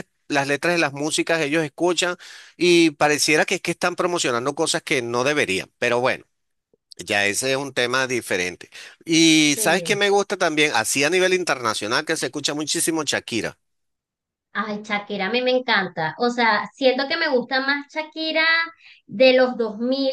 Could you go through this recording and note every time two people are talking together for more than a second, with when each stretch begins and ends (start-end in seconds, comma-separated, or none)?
none